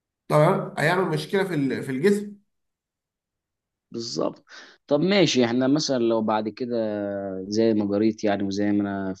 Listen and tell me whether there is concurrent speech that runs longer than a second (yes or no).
no